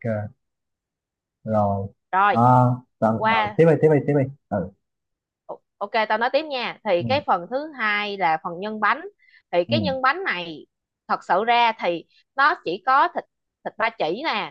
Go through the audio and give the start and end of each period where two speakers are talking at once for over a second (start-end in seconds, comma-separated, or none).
none